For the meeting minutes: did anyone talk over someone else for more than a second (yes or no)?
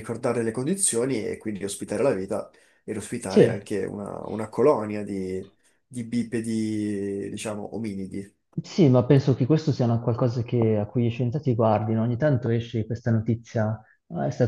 no